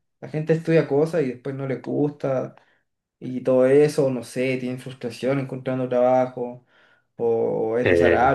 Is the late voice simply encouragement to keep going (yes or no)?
yes